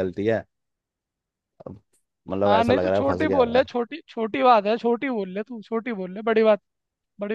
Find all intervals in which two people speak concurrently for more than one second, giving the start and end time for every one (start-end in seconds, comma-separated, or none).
2.5-3.7